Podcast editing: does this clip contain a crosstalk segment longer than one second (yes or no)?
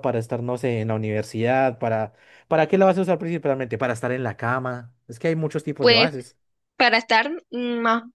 no